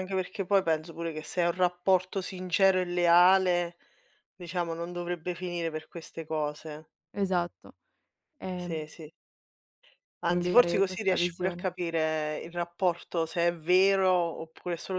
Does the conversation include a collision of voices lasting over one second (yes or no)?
yes